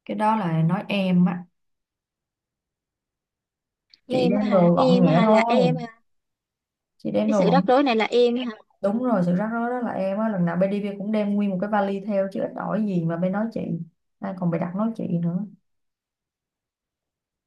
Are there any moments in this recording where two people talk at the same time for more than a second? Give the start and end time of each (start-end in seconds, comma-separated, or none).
4.1-5.8